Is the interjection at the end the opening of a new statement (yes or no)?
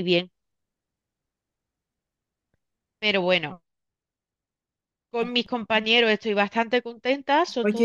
yes